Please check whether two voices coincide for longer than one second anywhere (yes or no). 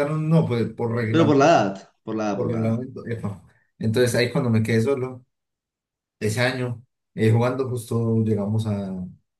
no